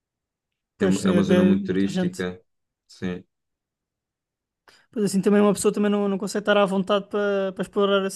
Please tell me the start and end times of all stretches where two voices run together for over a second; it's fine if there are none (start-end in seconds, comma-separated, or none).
0.8-2.2